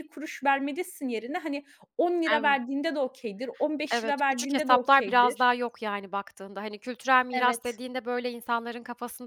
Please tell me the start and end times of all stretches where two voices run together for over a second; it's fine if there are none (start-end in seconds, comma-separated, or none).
3.9-5.5